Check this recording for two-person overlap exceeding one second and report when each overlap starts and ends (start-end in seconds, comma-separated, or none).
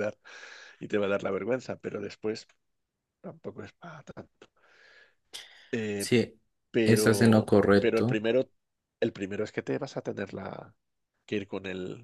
6.8-8.2